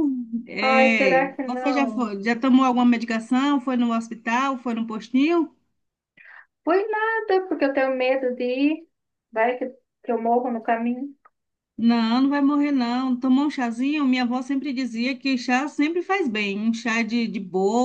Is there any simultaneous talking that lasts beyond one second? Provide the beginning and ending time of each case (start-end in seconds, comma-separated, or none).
0.6-2.1